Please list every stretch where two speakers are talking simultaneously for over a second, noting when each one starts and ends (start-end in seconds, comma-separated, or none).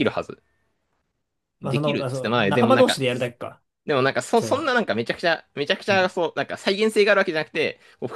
1.6-3.0